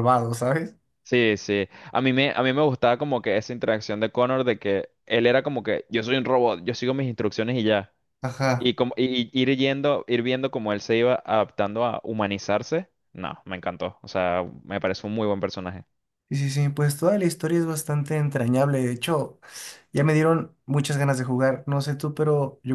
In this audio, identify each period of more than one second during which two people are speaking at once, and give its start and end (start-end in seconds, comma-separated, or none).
none